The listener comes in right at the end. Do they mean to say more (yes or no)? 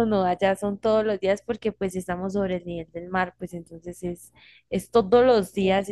no